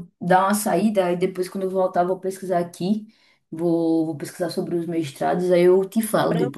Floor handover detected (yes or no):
yes